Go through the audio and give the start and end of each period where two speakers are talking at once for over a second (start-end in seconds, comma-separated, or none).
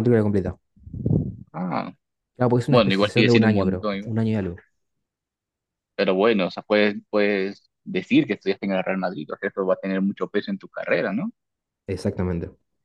2.7-4.2